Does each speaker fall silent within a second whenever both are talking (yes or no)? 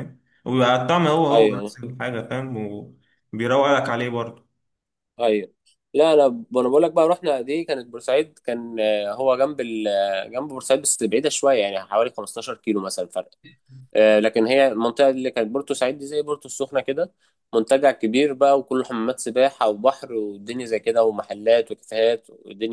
yes